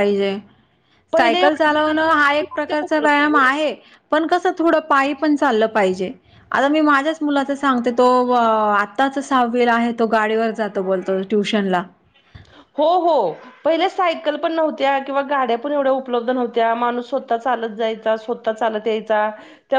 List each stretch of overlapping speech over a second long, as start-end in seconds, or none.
1.2-3.5